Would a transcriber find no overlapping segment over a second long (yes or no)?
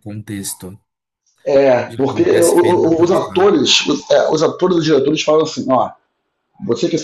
no